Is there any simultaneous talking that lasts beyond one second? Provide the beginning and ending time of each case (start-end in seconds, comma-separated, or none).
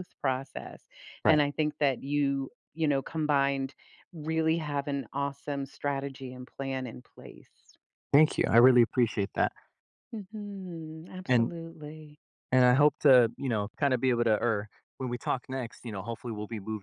none